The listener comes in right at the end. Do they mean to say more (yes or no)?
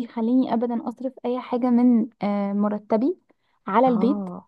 no